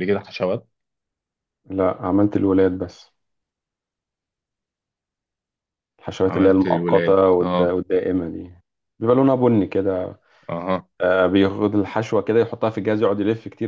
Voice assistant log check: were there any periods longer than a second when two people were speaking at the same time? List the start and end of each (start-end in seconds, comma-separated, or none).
6.3-7.7